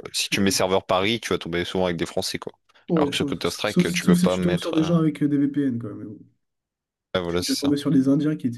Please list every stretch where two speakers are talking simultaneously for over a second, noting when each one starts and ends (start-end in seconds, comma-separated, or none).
2.9-5.1